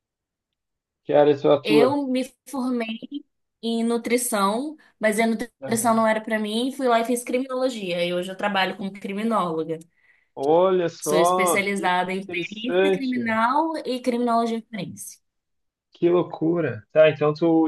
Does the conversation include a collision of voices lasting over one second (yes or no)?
yes